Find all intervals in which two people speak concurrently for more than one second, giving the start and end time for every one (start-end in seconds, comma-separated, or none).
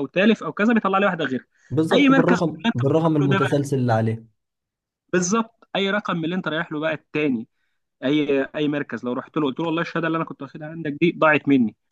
1.9-3.7